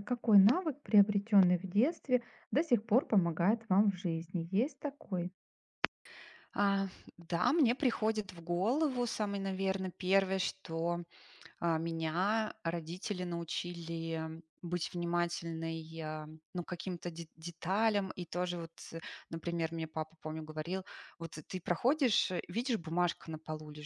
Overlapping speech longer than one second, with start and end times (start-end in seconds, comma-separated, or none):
none